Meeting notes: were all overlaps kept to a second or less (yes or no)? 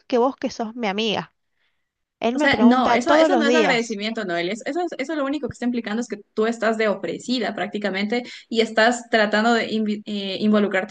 no